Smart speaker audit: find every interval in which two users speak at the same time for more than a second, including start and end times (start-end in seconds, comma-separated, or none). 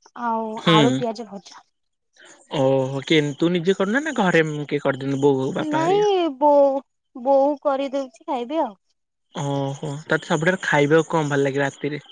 none